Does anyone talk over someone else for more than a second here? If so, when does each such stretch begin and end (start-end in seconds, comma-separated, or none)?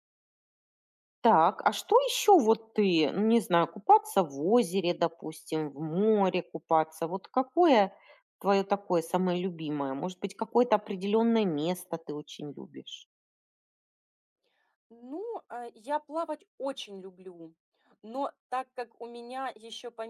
none